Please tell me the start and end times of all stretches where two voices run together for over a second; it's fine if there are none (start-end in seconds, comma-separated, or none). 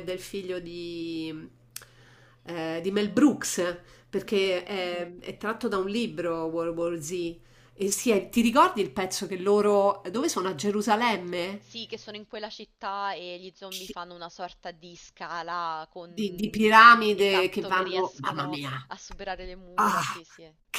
16.1-18.7